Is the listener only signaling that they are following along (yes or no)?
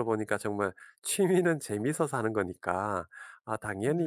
yes